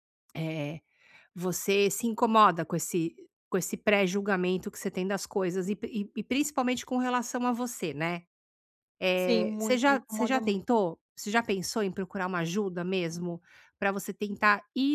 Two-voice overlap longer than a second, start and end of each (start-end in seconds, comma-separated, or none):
9.2-10.7